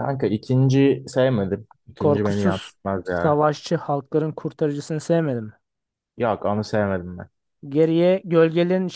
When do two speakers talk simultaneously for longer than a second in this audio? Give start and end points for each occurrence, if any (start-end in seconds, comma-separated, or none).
2.0-3.4